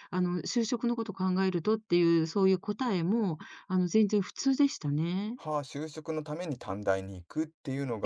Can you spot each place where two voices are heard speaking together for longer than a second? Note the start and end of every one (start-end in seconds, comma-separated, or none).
none